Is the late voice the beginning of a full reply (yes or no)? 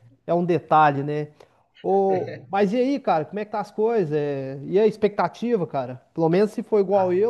no